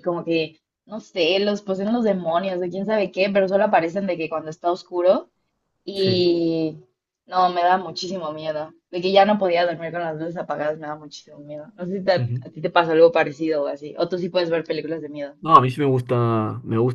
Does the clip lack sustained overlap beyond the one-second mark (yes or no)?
yes